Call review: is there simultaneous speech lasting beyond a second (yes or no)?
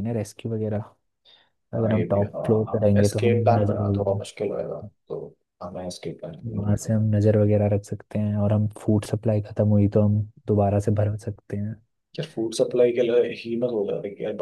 yes